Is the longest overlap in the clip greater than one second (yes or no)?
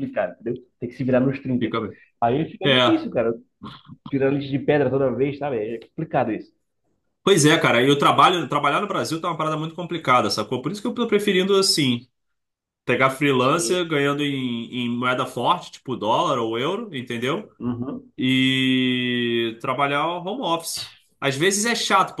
no